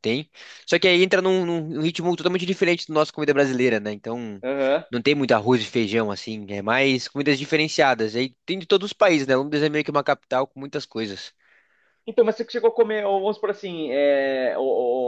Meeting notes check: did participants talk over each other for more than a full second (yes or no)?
no